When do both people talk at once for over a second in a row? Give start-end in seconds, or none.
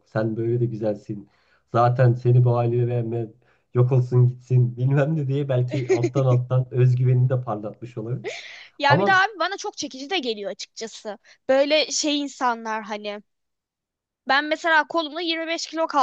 none